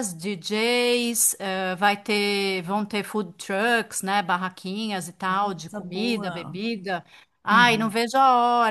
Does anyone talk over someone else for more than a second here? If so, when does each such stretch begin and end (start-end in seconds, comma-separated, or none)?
5.3-6.6